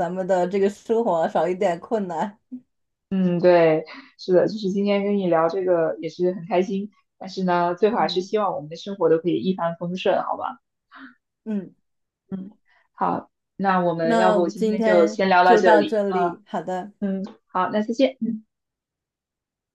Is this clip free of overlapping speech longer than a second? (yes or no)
no